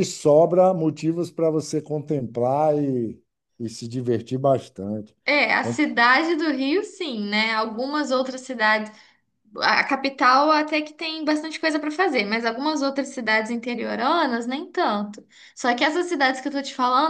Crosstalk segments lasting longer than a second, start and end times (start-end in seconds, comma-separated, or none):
none